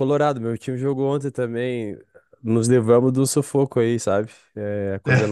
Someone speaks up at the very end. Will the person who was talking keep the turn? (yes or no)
yes